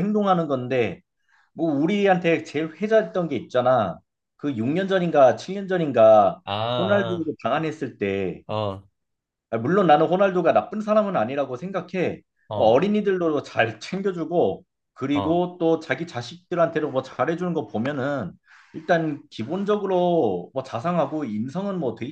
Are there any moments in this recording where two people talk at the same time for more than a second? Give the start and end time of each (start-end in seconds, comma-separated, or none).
none